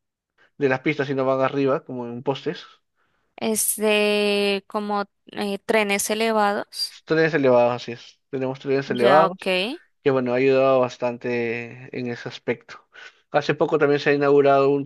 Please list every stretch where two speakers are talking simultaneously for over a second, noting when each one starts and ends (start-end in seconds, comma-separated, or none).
none